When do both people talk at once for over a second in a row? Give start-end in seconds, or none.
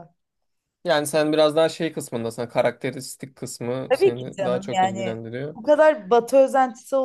3.9-5.6